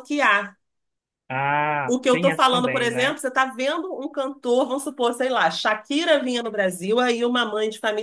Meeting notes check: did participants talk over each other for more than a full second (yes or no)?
yes